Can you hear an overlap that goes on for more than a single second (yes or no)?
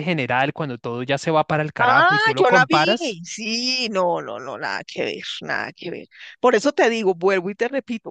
yes